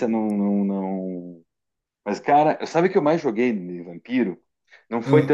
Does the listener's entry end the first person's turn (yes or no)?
no